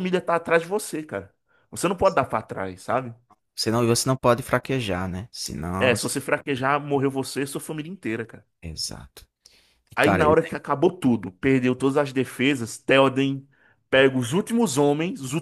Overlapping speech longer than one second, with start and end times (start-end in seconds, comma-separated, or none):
none